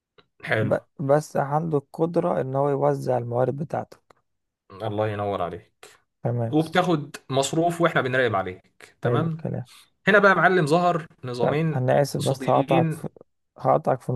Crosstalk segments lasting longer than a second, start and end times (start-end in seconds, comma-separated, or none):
11.4-13.1